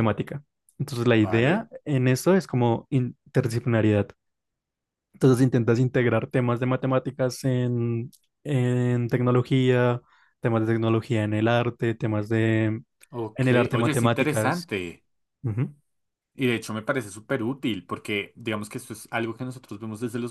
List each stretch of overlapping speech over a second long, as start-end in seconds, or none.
13.3-14.7